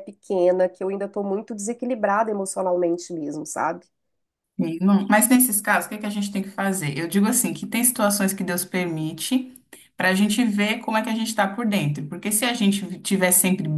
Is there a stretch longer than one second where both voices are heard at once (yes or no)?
no